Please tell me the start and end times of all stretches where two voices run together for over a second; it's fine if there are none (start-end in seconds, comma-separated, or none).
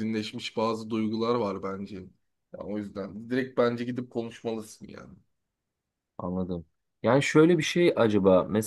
none